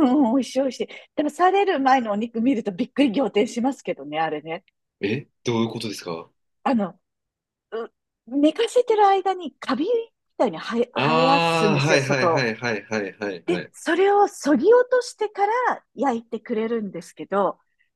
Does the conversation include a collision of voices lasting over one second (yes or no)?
yes